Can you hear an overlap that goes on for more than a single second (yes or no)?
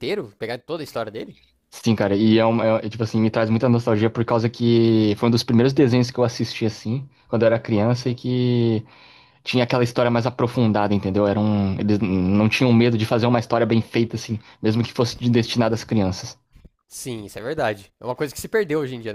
no